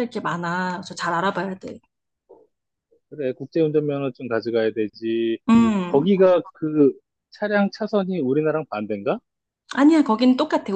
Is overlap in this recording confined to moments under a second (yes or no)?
yes